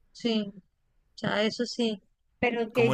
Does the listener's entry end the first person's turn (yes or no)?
yes